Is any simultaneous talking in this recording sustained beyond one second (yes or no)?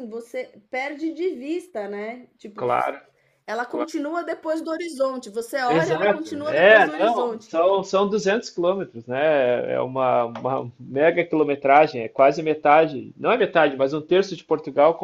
yes